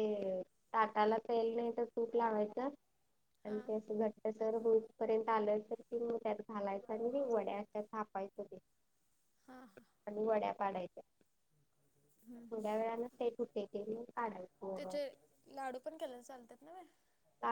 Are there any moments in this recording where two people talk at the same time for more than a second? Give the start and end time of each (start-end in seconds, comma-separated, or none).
none